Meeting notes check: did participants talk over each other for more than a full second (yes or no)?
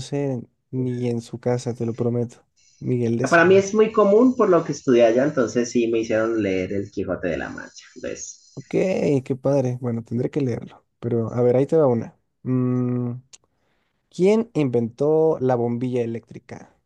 no